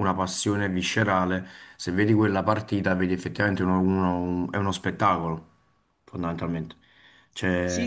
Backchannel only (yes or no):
no